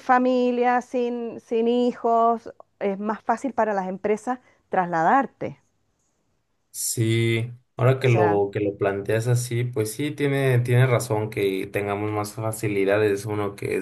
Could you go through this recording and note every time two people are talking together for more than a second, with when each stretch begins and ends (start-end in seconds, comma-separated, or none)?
none